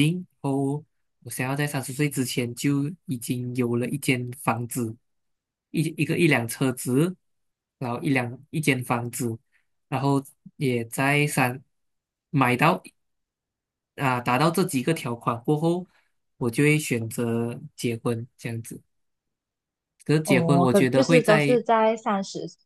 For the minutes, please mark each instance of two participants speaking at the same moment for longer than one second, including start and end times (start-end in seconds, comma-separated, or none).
20.2-21.6